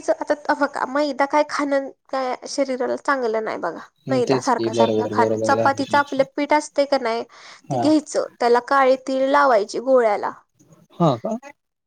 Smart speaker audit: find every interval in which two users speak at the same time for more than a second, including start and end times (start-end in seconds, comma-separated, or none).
3.9-6.2